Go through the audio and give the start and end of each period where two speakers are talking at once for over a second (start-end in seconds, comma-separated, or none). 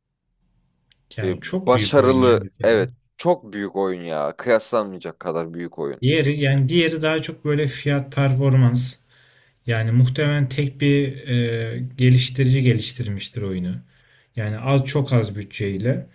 1.2-2.8